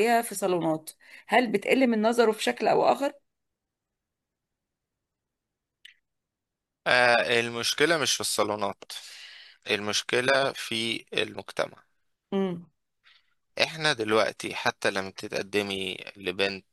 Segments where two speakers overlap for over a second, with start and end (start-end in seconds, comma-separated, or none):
none